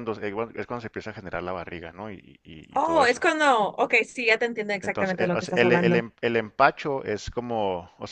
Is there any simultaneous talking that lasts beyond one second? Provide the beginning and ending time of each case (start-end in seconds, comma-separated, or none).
4.8-6.0